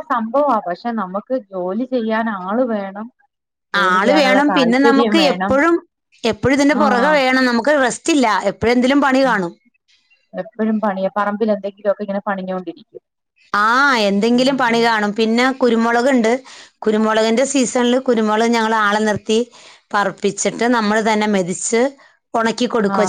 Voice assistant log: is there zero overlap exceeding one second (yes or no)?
no